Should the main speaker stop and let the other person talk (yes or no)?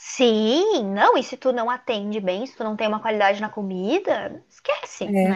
no